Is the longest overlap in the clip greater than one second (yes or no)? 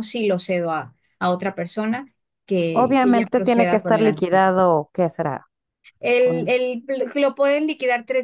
yes